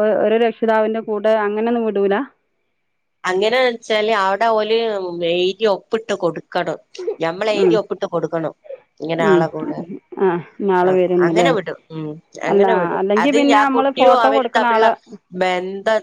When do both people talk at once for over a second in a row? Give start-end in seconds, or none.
12.5-14.9